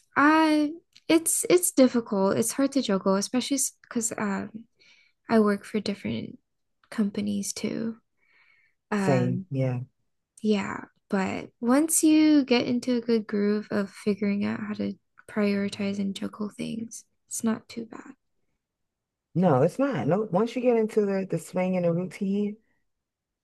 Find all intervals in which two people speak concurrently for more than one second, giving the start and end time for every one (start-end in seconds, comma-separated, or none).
none